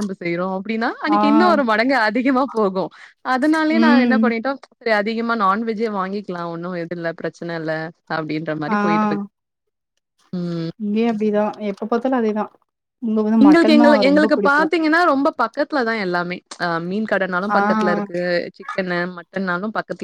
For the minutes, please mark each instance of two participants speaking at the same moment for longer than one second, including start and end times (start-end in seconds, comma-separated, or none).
none